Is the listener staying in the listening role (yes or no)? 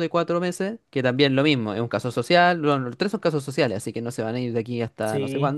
no